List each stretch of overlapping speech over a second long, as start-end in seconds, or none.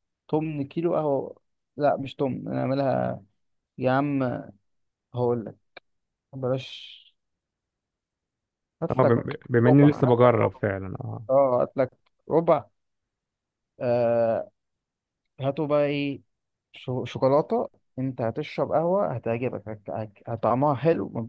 8.9-10.6